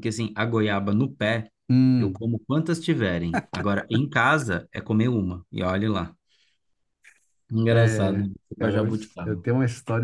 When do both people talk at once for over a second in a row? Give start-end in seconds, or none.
7.7-9.4